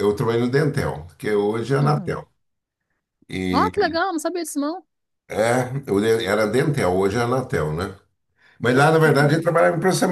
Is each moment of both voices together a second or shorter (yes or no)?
yes